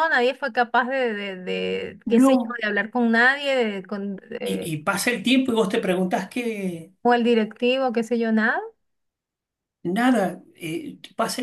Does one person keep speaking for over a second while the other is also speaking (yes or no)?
no